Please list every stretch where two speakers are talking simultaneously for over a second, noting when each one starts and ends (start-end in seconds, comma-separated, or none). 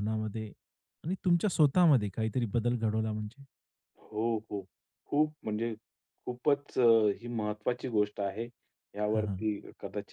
none